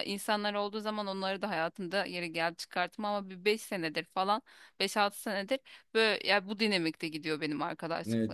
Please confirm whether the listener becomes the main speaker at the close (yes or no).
yes